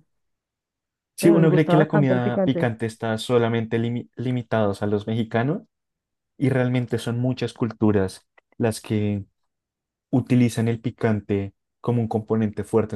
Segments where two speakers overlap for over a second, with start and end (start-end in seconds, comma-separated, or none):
1.2-2.7